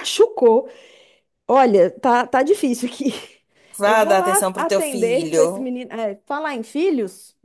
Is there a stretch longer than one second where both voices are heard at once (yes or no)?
yes